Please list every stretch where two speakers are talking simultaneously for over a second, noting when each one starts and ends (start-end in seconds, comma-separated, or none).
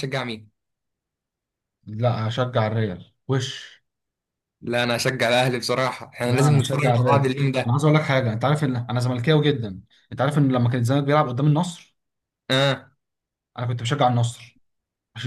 6.2-7.8